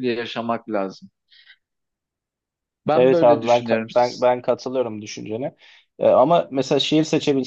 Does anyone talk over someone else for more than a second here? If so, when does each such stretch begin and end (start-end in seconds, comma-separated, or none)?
2.9-4.3